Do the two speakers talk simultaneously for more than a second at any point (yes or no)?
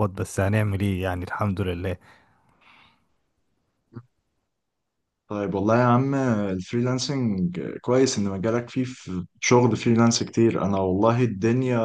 no